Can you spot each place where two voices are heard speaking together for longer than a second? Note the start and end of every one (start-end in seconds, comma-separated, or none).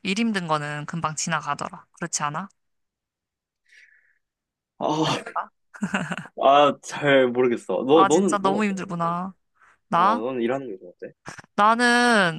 7.9-9.2